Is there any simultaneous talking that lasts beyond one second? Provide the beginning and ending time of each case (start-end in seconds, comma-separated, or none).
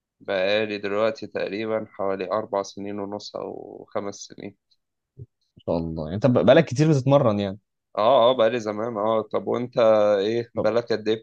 none